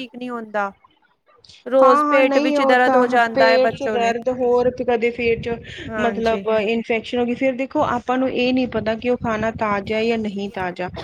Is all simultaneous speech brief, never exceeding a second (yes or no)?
no